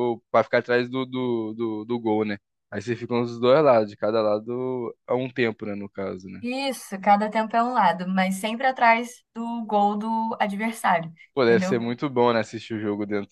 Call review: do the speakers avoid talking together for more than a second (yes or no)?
yes